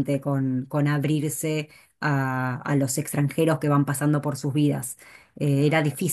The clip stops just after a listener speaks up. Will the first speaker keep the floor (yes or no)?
yes